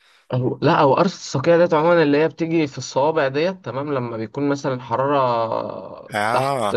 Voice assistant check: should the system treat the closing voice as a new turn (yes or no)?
no